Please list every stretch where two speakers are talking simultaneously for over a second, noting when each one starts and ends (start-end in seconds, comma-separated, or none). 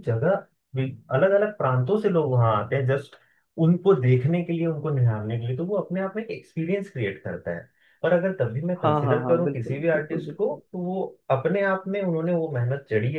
8.8-10.6